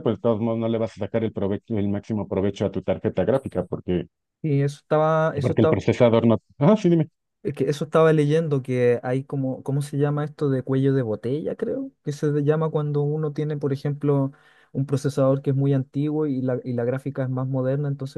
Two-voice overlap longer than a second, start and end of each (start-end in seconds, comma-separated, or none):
none